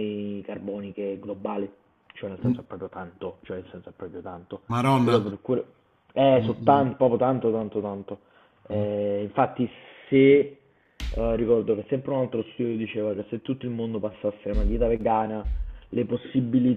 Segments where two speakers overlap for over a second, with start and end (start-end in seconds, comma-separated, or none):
none